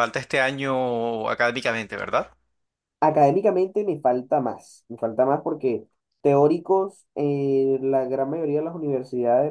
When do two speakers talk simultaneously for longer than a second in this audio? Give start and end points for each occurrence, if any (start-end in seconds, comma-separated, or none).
none